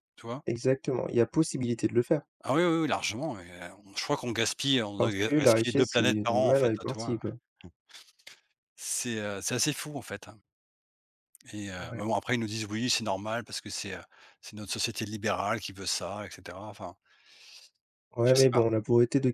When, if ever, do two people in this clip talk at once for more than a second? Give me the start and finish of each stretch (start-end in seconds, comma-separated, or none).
5.0-7.2